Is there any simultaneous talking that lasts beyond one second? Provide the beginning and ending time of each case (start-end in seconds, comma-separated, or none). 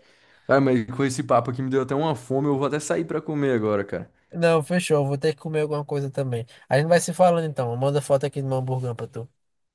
none